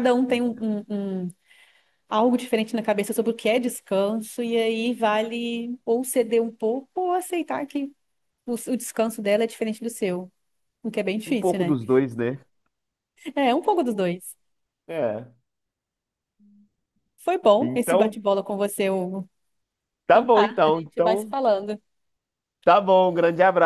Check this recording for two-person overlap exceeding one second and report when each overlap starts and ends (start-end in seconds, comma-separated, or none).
20.1-21.3